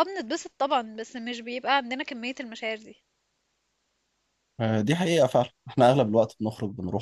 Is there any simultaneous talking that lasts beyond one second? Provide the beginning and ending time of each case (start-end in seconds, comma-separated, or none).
none